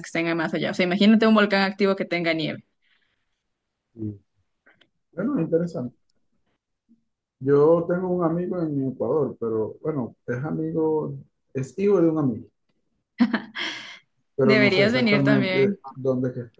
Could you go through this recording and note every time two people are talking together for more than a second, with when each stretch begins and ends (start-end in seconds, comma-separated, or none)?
14.4-15.8